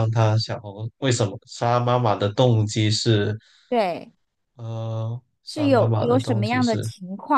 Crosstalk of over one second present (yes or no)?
yes